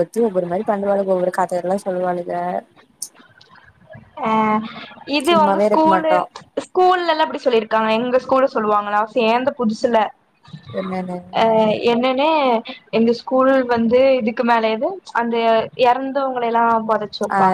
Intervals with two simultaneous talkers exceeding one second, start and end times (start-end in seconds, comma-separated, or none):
none